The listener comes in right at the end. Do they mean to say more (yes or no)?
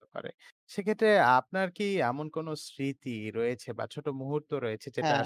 no